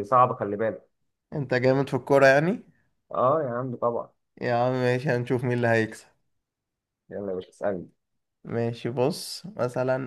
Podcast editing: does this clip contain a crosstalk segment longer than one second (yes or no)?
no